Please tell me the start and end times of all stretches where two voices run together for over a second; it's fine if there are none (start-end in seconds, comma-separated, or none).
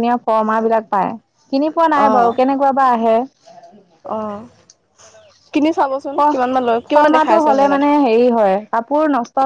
6.2-7.8